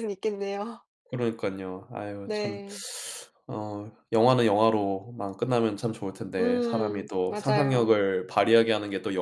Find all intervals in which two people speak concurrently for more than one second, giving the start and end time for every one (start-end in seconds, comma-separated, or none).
6.4-7.9